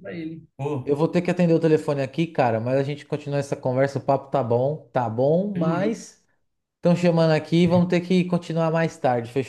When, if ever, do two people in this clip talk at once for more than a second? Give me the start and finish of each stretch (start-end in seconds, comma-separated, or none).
none